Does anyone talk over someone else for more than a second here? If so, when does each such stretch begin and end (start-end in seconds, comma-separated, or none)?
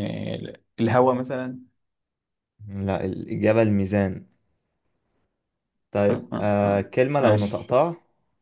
6.1-7.8